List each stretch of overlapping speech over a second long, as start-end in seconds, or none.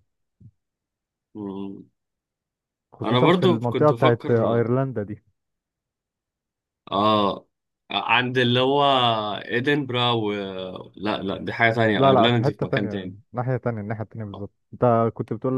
3.0-4.6, 11.9-13.2